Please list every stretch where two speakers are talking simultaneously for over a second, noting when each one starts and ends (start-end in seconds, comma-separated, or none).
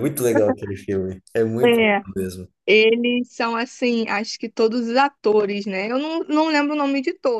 none